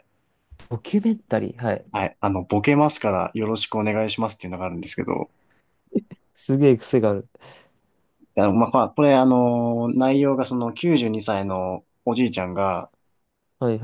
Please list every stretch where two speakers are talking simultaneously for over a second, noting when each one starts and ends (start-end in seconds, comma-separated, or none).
none